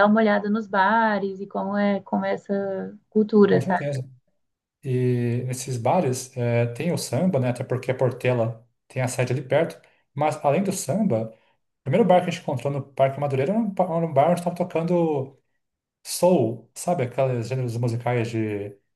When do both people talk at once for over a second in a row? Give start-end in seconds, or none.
none